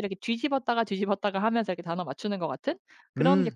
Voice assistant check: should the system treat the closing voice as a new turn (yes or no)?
no